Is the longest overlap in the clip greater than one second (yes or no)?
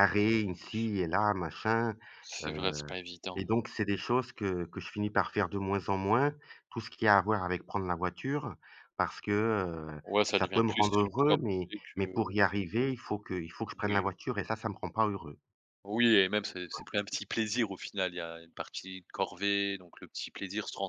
yes